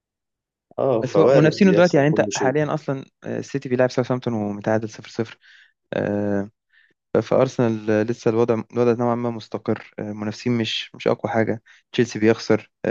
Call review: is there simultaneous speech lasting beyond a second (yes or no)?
yes